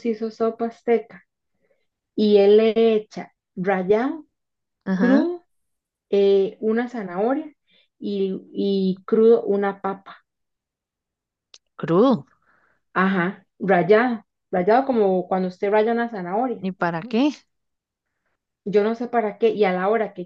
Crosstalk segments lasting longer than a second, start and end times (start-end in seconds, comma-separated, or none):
none